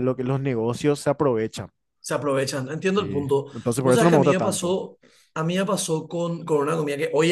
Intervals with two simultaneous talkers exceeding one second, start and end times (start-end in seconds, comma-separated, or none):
3.0-4.8